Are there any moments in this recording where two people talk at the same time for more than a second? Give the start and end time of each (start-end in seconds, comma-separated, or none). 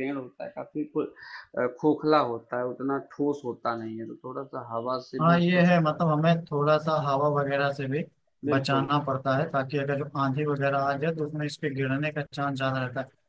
none